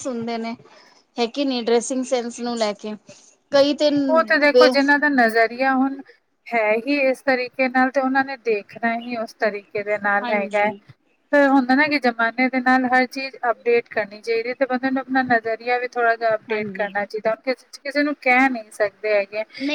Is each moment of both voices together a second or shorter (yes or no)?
yes